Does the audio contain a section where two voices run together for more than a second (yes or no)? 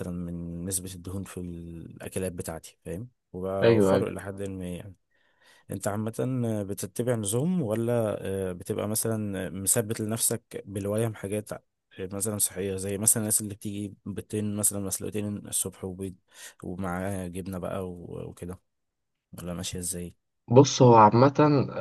no